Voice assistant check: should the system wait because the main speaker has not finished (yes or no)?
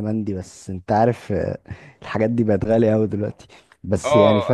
no